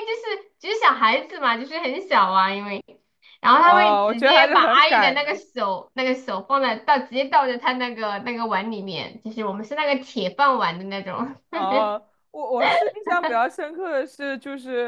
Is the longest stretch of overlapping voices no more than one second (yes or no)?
no